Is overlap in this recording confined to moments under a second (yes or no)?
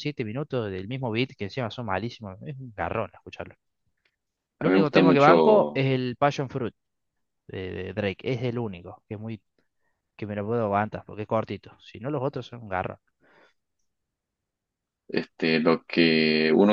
no